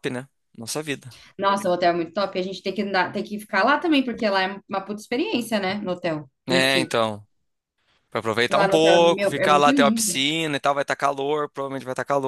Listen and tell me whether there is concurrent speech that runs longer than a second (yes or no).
yes